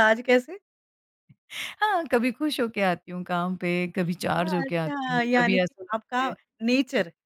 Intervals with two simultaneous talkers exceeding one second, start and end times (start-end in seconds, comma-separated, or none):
4.4-6.3